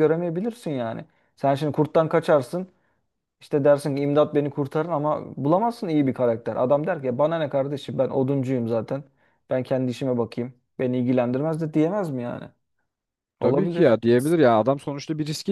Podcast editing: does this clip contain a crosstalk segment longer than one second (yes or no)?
no